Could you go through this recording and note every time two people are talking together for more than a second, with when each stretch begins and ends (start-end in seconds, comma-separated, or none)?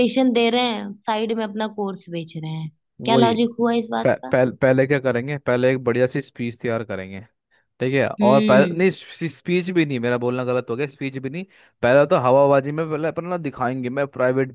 none